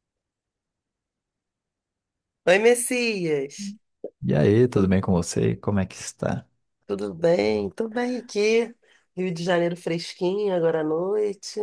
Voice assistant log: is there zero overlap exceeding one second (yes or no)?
yes